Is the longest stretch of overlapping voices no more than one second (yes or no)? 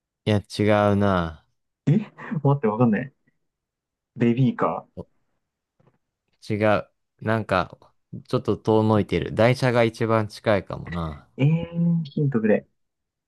yes